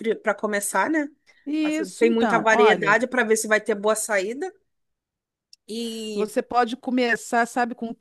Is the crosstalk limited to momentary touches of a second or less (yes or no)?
no